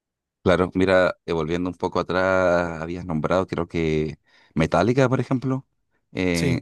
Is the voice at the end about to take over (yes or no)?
no